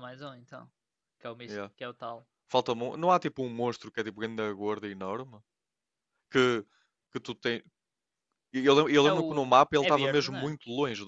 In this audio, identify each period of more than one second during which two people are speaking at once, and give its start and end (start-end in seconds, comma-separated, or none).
9.0-10.6